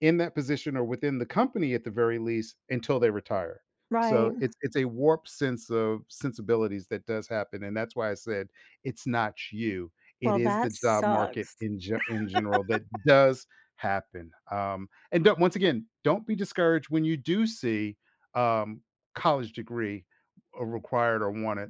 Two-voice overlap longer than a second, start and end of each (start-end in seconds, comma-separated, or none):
10.2-11.6